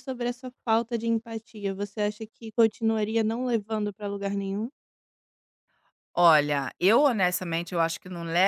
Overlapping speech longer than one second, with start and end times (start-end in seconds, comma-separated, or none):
none